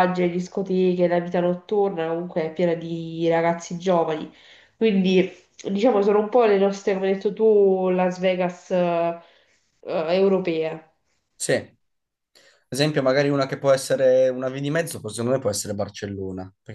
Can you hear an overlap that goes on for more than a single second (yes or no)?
no